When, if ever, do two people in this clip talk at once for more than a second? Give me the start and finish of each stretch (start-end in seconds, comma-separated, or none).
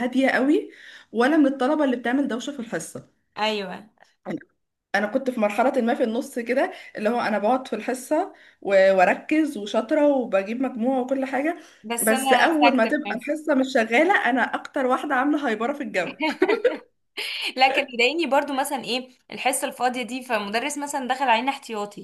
12.0-13.3